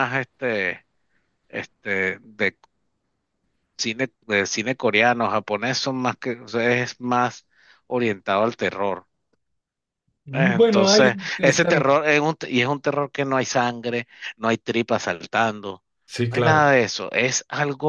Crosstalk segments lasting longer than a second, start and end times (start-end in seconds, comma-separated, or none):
10.3-11.8